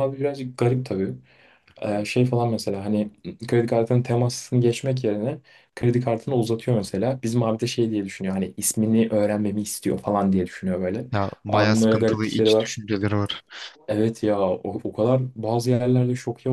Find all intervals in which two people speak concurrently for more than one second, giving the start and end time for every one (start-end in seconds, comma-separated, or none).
11.5-12.7